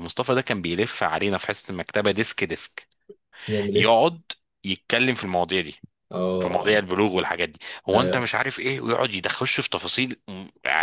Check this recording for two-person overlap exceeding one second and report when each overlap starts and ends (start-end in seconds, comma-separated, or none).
none